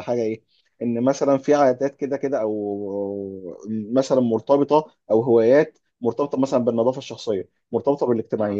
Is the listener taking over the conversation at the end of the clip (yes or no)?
no